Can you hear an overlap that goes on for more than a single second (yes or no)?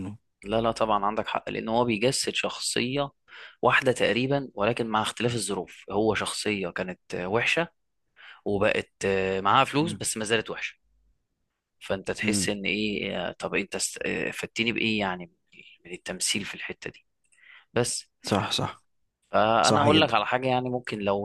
no